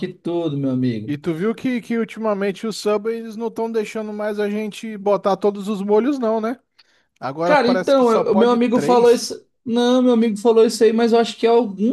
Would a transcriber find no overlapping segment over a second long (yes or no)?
no